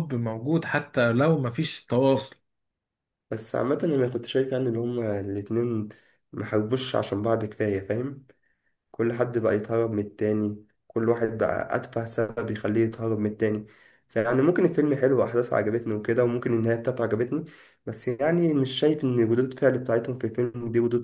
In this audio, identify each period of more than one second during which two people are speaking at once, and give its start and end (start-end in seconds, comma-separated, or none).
none